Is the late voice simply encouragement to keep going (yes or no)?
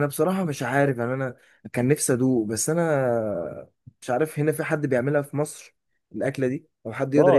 no